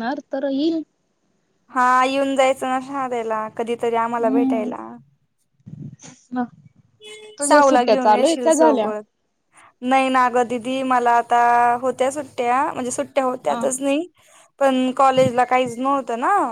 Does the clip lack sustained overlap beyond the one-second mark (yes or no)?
no